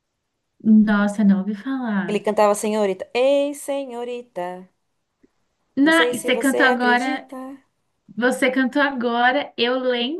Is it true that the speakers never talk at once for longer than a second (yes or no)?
no